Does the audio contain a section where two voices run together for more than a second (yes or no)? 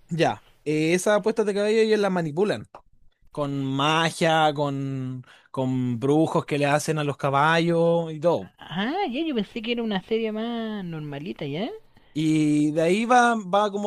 no